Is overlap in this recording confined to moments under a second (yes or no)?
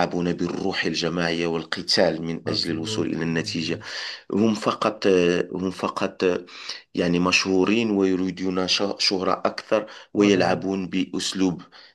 no